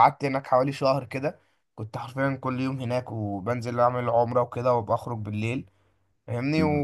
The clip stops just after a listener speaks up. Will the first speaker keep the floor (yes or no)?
yes